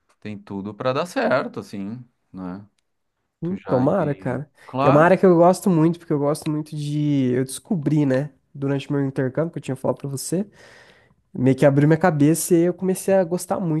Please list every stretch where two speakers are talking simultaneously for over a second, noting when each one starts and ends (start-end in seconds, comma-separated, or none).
3.4-5.1